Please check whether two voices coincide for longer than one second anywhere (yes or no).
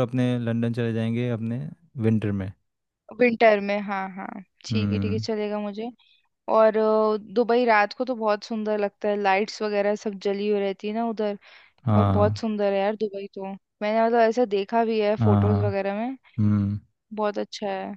no